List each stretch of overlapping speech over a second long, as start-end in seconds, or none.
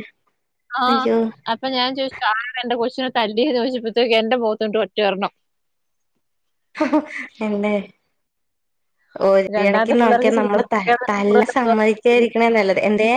9.7-11.7